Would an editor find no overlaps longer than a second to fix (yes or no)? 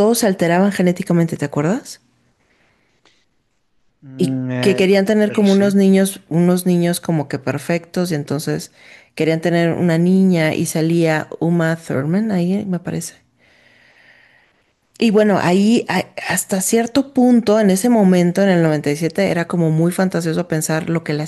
no